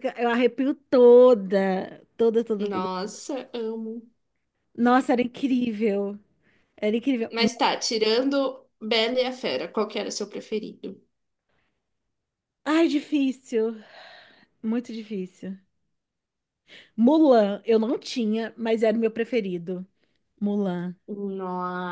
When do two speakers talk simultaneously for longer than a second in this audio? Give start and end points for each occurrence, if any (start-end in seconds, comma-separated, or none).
none